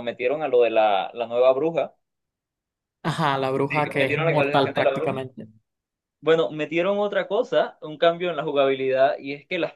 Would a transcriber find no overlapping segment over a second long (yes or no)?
no